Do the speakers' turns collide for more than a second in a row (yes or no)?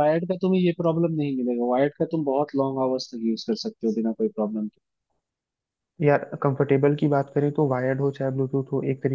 no